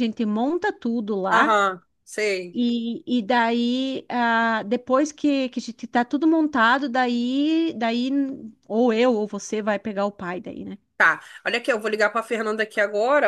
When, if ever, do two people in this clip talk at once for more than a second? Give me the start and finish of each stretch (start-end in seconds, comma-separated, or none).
none